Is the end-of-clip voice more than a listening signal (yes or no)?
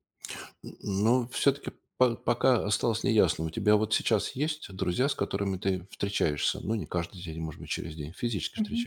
yes